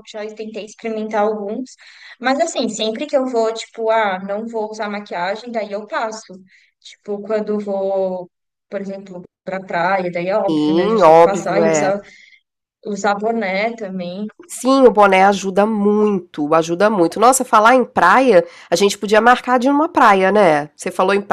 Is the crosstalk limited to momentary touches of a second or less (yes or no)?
no